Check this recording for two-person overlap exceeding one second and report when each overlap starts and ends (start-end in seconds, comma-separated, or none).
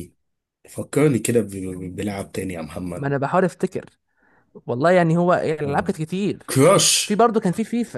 none